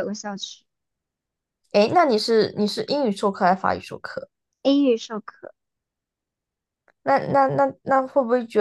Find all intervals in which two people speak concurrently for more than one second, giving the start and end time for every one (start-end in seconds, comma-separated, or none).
none